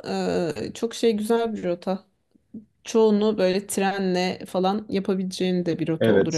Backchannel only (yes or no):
no